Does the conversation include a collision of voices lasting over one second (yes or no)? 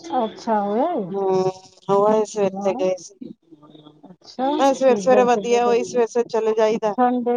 yes